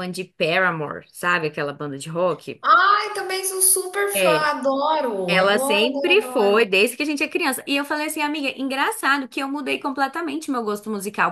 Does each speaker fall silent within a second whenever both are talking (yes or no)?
no